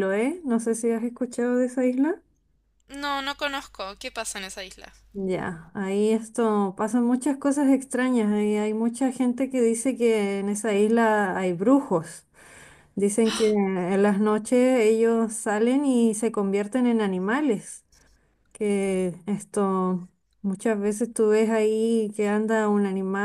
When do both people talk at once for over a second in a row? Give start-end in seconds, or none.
none